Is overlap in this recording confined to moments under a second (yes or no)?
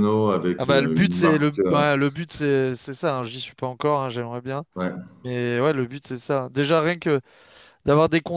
no